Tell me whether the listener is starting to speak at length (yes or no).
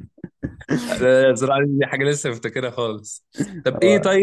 no